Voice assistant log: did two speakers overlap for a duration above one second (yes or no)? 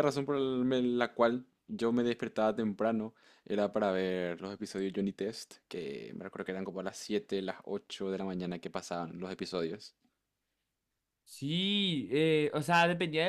no